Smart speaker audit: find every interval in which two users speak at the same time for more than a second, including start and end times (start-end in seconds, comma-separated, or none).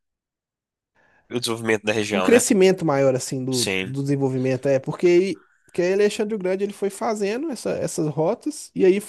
none